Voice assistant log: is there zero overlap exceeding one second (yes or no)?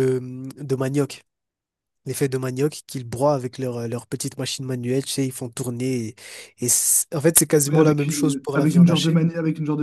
no